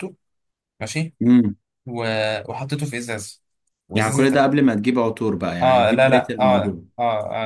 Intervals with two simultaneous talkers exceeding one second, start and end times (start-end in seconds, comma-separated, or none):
5.6-6.8